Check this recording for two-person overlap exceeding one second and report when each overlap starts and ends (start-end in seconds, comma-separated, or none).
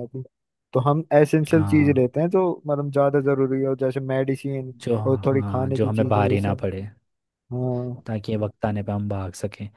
4.8-6.6